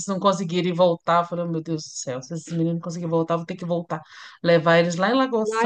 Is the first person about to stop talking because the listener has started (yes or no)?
yes